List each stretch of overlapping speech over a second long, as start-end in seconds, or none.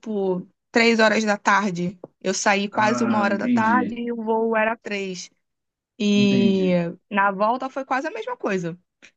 2.7-4.0